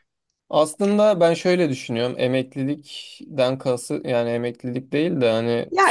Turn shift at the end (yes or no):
yes